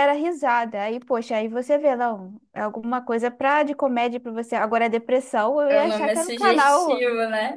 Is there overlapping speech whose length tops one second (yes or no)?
yes